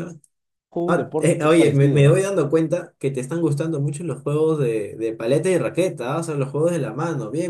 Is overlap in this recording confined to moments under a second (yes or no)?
no